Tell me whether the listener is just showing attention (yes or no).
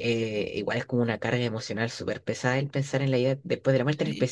yes